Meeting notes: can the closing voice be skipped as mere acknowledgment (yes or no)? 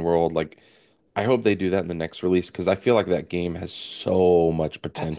no